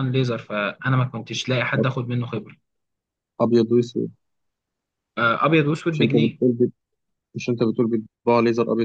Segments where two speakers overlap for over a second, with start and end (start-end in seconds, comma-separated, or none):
none